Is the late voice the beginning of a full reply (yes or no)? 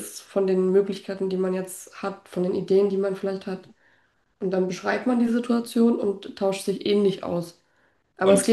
no